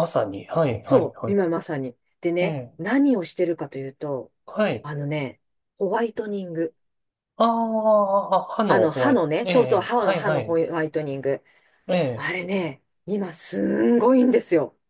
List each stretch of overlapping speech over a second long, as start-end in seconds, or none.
8.7-10.6